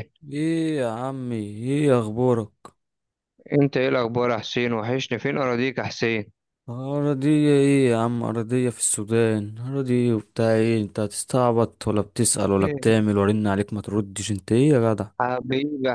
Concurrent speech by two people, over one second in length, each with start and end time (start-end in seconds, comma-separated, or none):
none